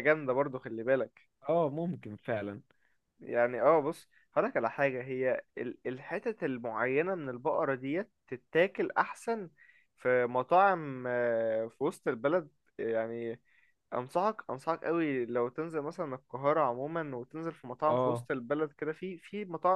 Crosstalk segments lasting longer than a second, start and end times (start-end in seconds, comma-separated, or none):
none